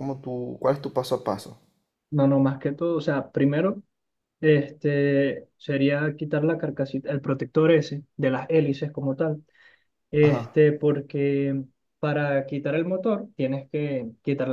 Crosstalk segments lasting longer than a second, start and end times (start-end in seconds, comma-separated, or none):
none